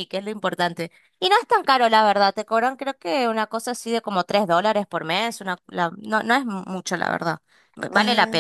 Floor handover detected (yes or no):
yes